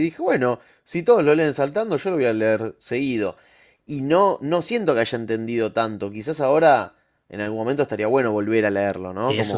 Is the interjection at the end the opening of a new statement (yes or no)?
no